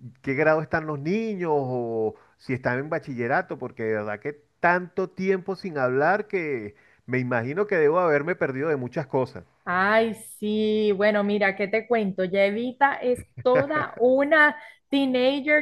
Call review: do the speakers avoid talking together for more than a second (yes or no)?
yes